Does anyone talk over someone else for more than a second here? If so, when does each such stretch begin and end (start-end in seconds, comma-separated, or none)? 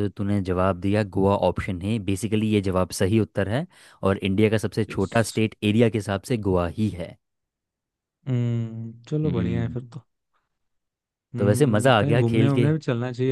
11.4-12.7